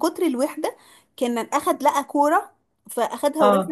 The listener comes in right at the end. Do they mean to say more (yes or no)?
no